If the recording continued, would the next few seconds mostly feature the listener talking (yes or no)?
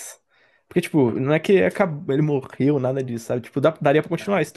no